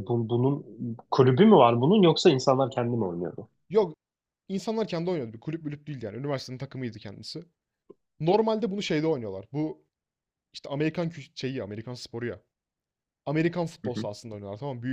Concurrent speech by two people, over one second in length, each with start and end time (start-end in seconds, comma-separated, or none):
none